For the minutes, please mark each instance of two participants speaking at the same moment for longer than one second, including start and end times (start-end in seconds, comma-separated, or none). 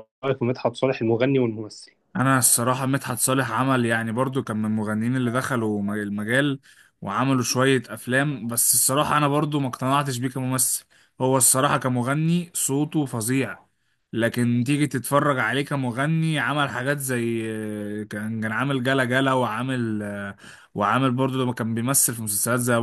none